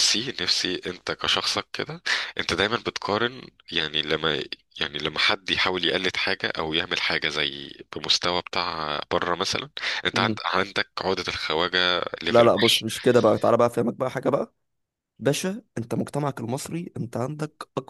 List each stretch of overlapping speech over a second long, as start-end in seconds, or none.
none